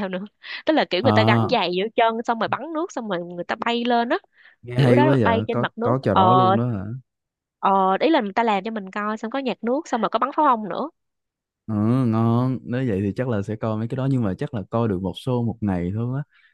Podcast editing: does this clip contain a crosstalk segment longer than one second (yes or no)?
yes